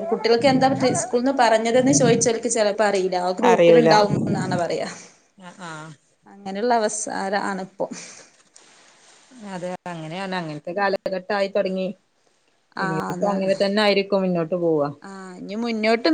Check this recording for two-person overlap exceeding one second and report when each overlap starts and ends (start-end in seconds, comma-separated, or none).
none